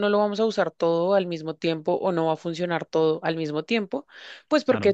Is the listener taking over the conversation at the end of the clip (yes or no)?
no